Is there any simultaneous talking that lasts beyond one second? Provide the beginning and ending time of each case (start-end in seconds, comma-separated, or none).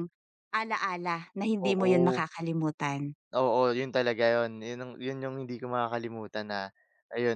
none